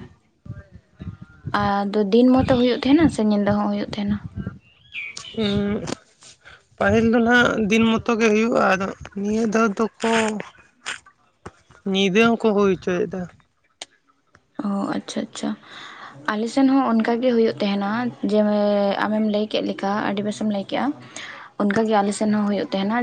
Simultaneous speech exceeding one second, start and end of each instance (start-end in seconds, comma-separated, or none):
none